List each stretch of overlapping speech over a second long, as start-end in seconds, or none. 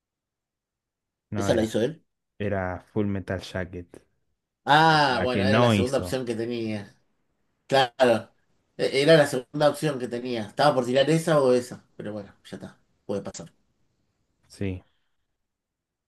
4.9-6.2